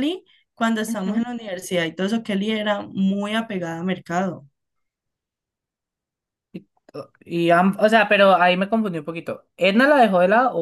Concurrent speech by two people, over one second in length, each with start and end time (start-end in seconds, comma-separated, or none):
none